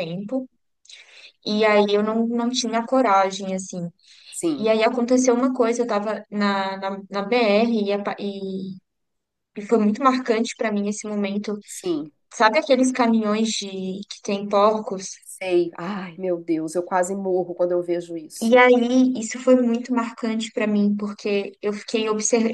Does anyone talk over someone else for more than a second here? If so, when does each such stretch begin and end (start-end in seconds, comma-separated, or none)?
none